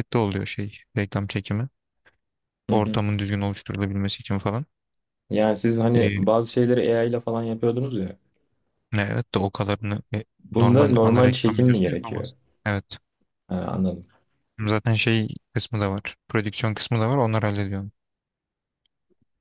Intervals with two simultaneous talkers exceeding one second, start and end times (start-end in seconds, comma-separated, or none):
10.4-12.3